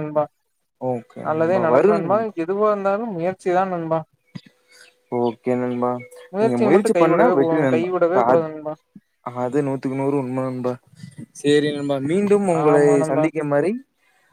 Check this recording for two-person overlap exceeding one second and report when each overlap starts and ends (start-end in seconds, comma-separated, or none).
6.4-8.4